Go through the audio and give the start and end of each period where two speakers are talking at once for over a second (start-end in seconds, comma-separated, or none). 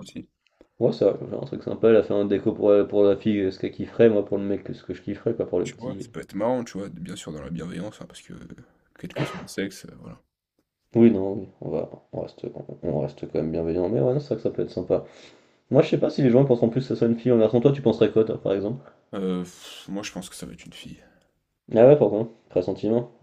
none